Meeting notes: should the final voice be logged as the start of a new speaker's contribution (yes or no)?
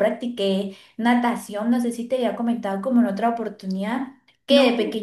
no